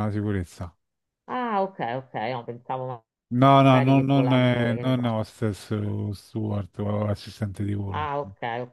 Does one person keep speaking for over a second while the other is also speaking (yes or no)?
yes